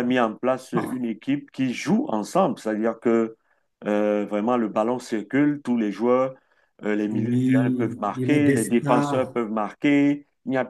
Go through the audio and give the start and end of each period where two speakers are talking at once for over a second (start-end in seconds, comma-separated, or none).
7.1-9.3